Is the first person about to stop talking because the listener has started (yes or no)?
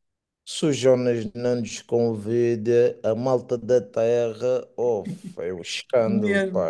yes